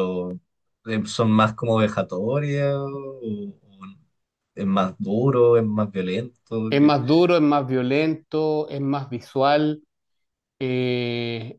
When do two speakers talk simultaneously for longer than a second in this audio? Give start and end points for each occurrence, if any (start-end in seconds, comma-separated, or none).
none